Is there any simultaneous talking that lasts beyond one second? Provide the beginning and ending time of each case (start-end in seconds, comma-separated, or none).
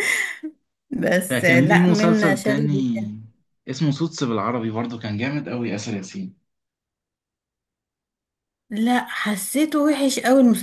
1.3-2.8